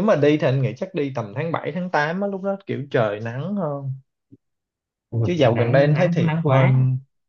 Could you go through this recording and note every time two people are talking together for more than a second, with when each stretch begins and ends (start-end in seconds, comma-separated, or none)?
5.2-6.7